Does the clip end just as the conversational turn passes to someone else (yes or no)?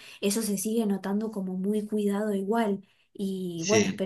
no